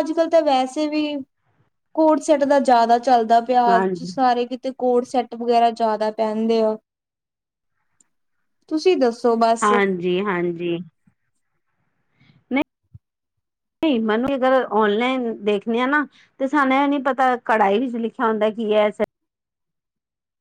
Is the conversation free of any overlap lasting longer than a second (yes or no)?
yes